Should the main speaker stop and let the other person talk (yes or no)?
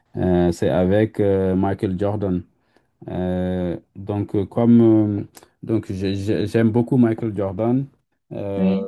no